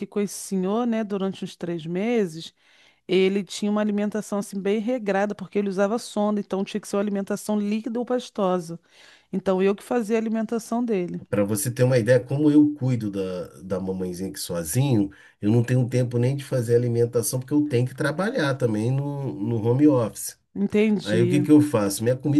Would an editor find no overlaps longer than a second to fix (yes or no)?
yes